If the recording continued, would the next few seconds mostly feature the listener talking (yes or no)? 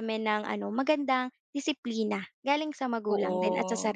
yes